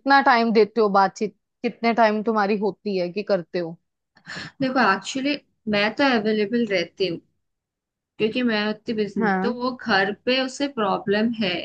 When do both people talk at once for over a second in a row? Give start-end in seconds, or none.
none